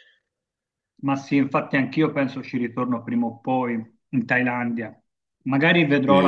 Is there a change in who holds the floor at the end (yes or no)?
yes